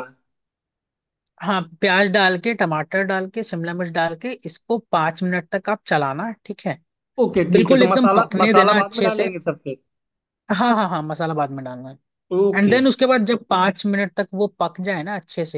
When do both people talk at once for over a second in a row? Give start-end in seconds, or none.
7.5-9.2